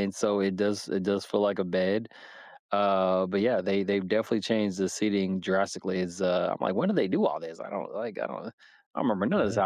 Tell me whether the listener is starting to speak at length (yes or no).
no